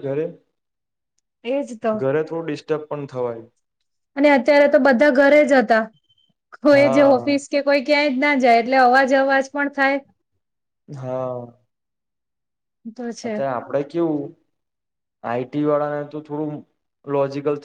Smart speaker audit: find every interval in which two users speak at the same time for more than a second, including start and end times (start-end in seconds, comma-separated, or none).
none